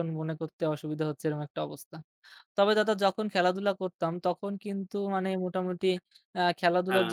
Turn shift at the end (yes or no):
no